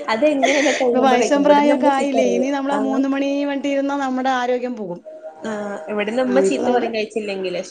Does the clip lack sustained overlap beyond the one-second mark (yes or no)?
no